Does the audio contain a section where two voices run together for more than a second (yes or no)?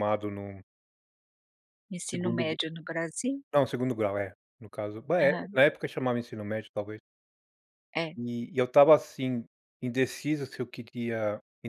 no